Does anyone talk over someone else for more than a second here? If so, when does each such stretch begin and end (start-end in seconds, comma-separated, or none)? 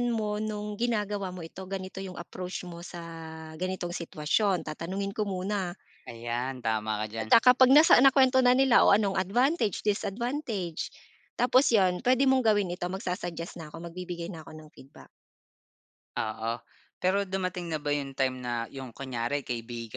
none